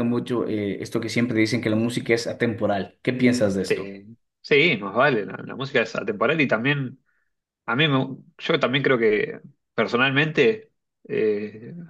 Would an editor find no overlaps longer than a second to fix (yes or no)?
yes